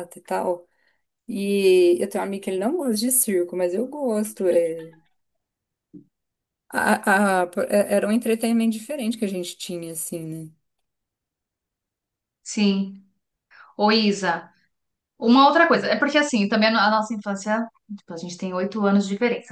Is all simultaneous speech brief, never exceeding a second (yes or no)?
yes